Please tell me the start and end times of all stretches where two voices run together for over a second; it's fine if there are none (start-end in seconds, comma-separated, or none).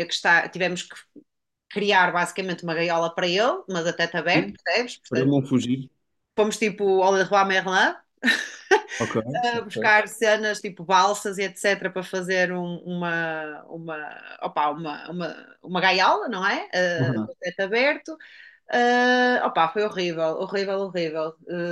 none